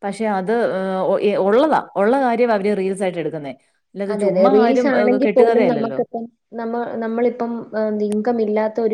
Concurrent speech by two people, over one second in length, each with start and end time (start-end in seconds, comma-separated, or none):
4.1-6.0